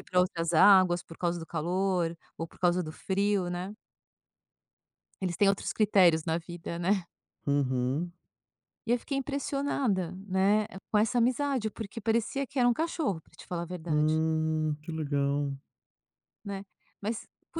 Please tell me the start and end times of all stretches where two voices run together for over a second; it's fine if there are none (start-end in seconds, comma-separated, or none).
none